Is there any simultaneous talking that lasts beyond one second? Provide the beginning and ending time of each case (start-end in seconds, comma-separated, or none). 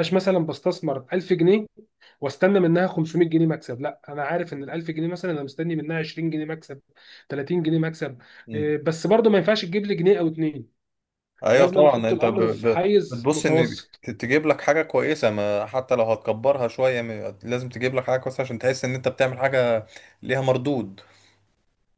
11.5-14.0